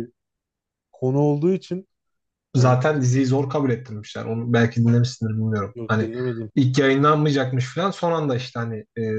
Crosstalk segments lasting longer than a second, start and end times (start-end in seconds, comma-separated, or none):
none